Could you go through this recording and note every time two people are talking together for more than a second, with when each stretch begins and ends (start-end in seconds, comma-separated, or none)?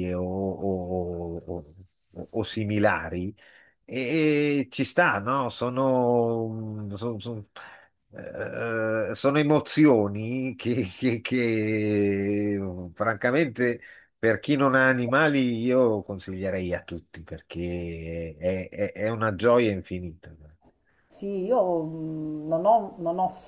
none